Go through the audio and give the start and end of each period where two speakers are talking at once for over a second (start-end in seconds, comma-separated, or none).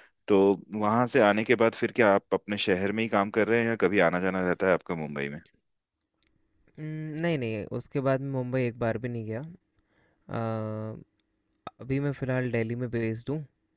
none